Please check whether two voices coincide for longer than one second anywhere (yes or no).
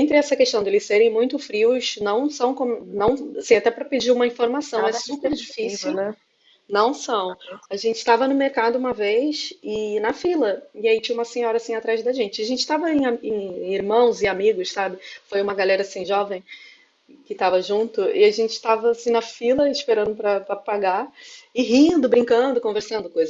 yes